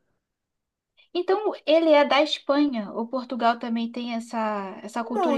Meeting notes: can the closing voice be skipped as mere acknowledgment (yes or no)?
no